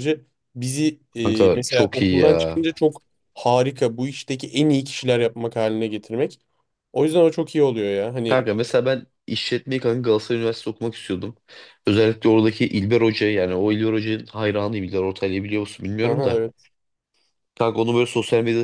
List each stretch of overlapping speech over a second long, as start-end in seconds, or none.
1.2-2.6